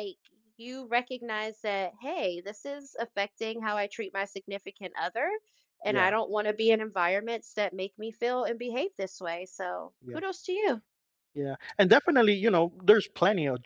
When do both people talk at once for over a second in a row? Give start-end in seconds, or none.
none